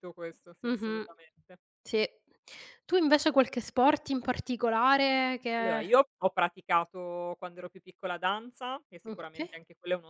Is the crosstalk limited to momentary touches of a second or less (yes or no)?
yes